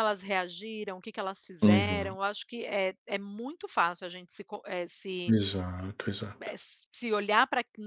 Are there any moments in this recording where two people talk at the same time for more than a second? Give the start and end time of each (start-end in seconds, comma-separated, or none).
none